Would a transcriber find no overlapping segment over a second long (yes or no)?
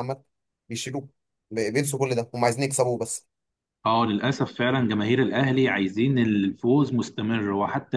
yes